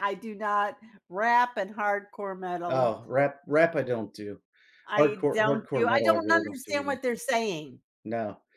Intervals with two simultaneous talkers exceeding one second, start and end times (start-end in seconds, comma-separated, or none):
5.0-7.0